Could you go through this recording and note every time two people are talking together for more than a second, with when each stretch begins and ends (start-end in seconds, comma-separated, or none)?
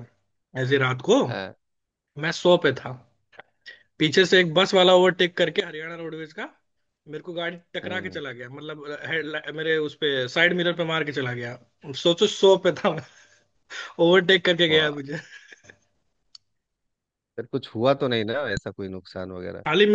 none